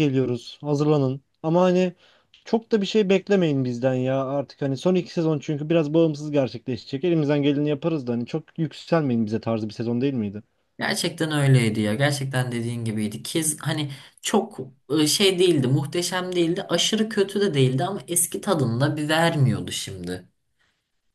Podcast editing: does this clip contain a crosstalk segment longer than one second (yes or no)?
no